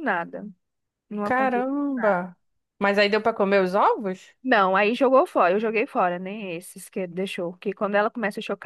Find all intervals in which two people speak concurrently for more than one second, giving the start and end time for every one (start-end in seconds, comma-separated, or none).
none